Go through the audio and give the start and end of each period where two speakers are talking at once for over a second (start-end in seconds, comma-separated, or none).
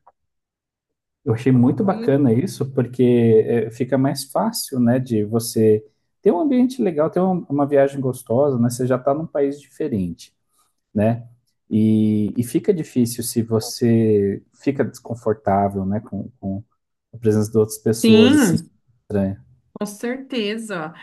none